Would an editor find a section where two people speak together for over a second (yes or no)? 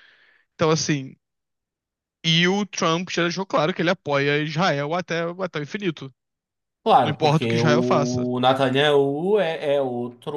yes